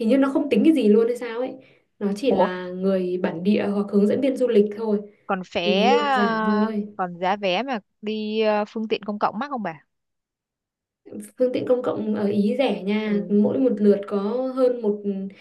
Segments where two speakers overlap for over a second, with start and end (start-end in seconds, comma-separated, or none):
5.6-6.9